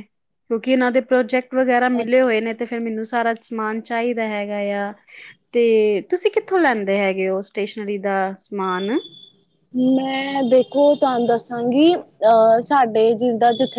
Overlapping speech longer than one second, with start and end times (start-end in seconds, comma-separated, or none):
none